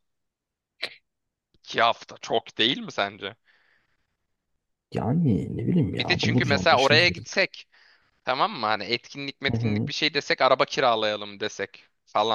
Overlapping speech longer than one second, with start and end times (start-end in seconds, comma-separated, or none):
5.9-7.3